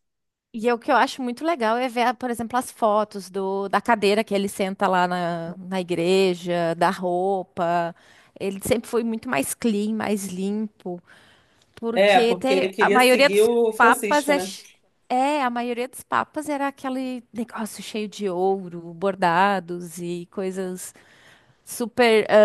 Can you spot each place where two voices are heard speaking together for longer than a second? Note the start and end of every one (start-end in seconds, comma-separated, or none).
11.9-14.5